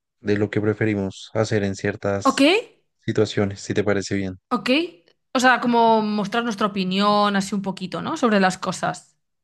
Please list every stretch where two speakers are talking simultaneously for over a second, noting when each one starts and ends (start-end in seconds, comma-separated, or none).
none